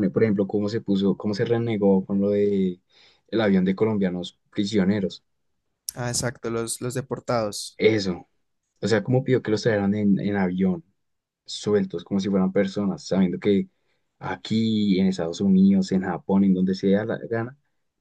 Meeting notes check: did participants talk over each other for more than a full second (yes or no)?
no